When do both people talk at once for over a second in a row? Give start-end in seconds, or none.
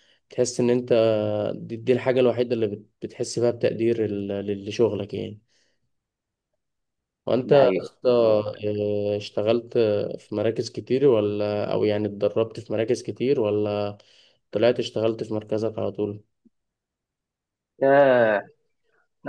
7.4-8.8